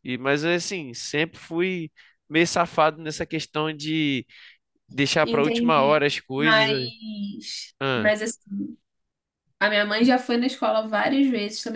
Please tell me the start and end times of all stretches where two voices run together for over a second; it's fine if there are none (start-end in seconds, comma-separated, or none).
5.2-6.9